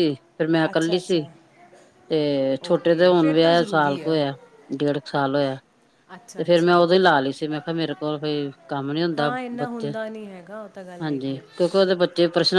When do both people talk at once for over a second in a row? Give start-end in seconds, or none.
2.7-4.2